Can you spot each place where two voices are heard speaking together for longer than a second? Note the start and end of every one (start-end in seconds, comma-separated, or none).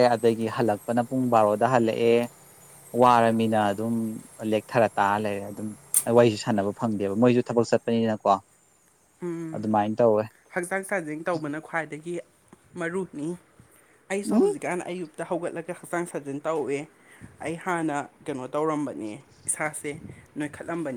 none